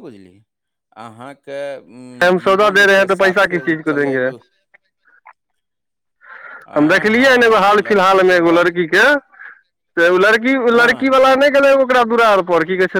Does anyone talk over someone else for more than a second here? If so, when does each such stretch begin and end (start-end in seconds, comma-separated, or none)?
2.4-4.3, 6.8-8.6